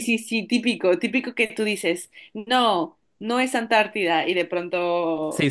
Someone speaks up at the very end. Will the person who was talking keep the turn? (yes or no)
no